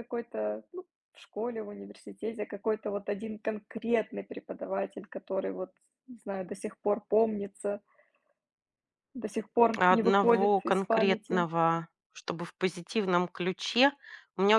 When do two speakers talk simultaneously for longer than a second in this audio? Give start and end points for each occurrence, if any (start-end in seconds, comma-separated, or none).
9.8-11.5